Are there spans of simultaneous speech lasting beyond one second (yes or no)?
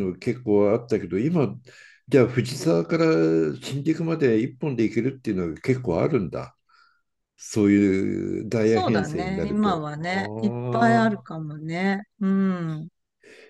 yes